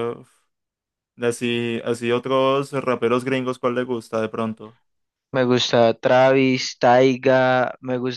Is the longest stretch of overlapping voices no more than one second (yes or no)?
yes